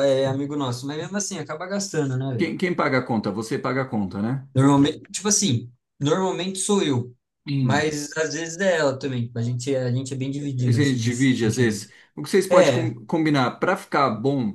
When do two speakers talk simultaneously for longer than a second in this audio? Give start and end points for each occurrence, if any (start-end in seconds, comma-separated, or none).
10.6-11.8